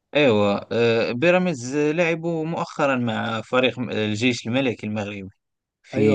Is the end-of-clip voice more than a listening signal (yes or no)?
yes